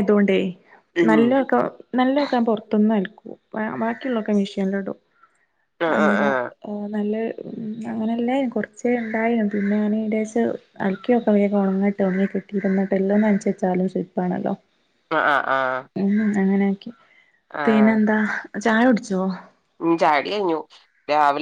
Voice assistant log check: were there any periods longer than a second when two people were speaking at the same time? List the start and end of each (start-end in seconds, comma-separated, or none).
none